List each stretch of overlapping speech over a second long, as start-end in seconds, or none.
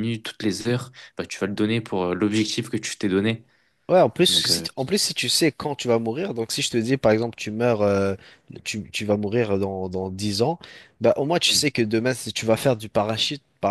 none